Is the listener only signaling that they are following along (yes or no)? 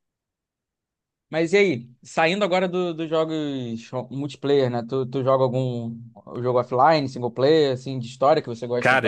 no